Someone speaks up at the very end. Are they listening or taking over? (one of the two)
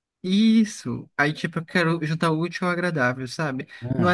listening